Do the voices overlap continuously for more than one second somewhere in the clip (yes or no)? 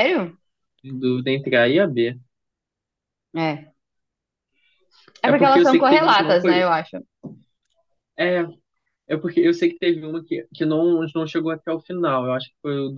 yes